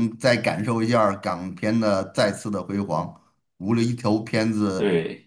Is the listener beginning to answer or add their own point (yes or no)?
no